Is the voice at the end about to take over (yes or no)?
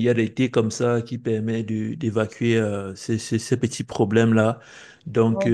no